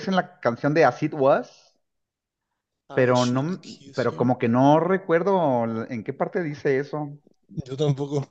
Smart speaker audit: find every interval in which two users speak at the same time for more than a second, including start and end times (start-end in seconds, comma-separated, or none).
2.9-4.3